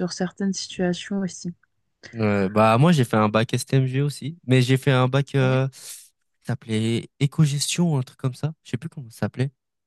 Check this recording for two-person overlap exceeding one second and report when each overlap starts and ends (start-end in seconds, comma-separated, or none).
none